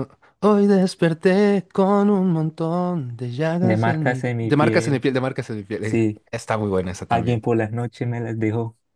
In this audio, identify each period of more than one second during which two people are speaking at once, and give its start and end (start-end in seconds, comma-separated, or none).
3.6-5.0